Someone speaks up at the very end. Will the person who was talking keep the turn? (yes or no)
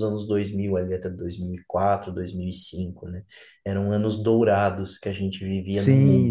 no